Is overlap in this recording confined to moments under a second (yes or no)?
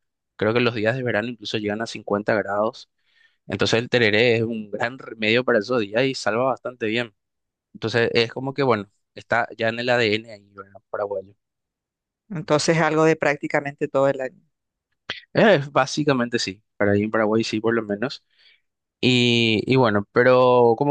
yes